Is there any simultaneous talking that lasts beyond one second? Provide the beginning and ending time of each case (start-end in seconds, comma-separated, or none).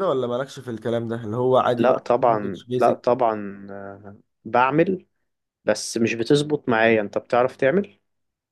1.8-3.1